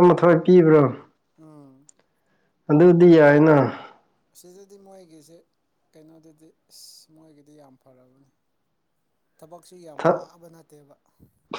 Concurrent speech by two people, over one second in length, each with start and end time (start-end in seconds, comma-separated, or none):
none